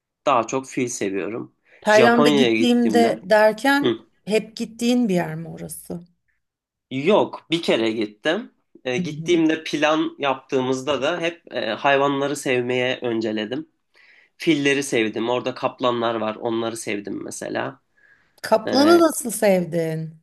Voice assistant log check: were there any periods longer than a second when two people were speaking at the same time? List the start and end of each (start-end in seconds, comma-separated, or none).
1.8-3.2